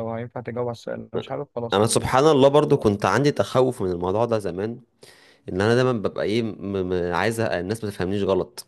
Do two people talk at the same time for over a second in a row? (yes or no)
no